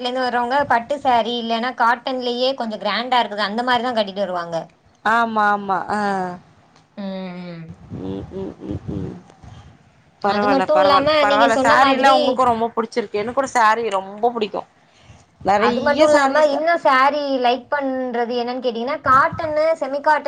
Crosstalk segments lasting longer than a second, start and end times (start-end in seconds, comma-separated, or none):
10.3-12.2